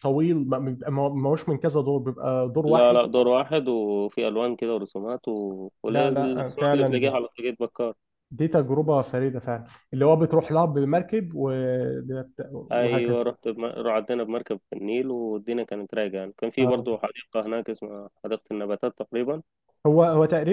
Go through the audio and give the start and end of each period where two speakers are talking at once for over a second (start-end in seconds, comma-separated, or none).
5.9-7.1